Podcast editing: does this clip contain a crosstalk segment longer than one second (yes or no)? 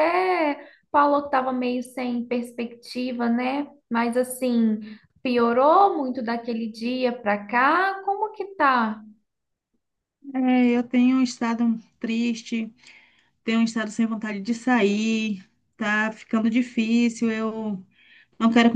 no